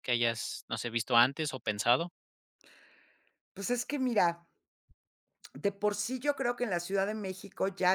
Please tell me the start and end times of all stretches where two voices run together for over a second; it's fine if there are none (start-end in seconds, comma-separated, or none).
none